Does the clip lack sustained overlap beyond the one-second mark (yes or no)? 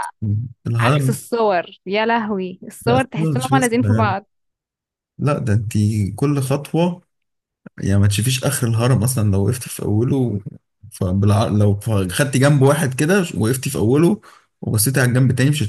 no